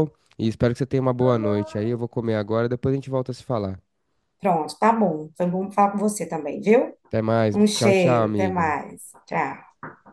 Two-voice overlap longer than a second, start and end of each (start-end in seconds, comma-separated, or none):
7.5-8.8